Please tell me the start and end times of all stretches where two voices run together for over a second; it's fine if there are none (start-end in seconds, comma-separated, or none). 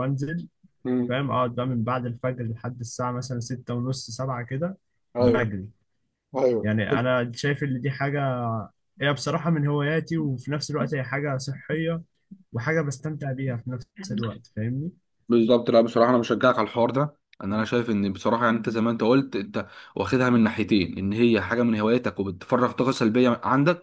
none